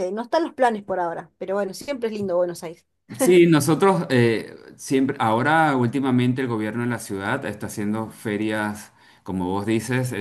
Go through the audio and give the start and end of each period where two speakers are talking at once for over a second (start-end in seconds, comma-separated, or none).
none